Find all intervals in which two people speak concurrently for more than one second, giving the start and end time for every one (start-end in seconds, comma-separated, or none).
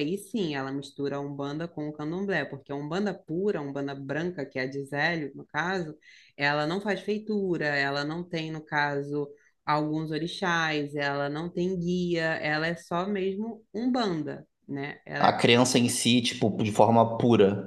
none